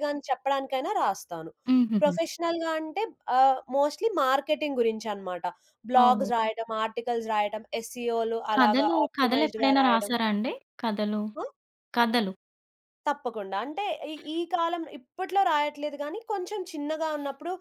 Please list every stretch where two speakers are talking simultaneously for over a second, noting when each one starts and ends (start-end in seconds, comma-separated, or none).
8.5-10.1